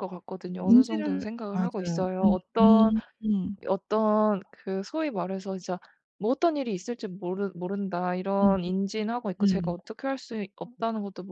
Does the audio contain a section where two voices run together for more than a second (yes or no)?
yes